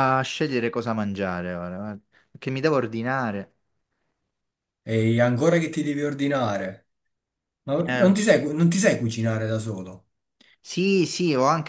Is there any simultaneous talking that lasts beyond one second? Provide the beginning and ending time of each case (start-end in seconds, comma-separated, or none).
none